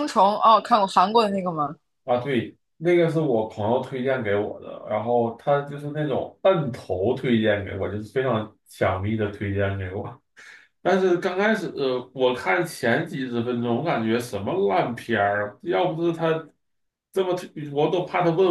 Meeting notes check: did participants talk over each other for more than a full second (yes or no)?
no